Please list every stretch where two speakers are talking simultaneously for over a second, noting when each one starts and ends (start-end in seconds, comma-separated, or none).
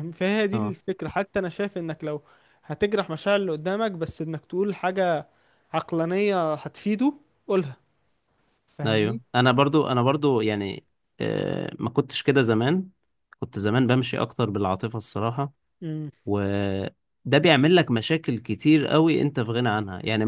none